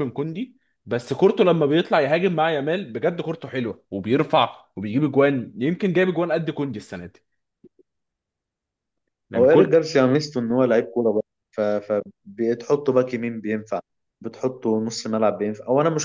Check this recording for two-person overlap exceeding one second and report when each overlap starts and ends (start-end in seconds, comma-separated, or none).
none